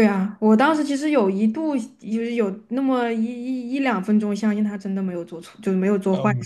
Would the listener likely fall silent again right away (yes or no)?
no